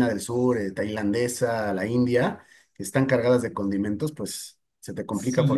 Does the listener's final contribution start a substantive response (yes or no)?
yes